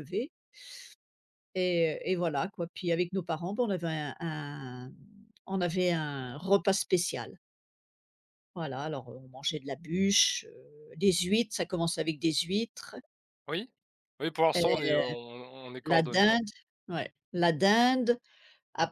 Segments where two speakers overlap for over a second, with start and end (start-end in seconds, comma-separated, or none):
none